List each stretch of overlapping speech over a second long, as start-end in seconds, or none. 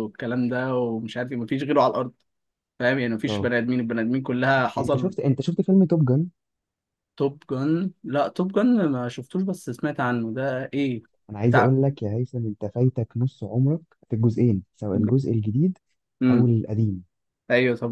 none